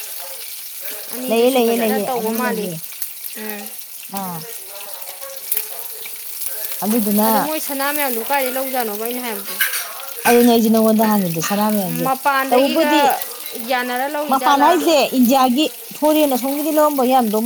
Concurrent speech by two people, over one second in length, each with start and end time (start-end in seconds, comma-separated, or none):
1.3-2.7